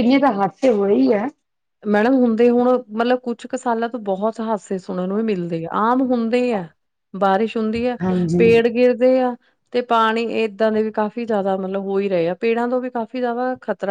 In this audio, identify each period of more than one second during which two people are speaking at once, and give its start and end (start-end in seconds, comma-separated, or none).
none